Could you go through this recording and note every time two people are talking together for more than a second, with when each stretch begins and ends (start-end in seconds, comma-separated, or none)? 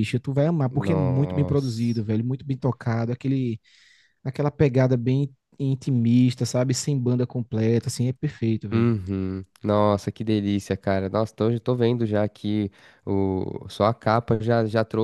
0.7-2.0